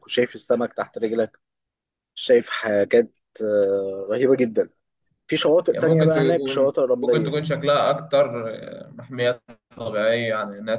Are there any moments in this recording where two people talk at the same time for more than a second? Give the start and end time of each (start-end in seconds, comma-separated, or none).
5.7-7.4